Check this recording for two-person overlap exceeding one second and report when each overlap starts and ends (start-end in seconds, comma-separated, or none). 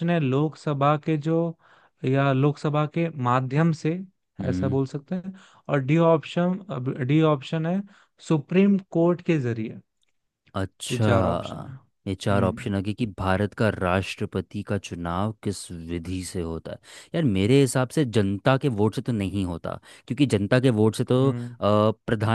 10.9-12.7